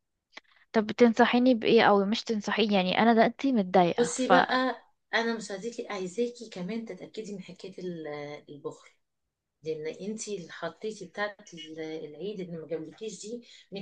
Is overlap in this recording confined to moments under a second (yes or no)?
yes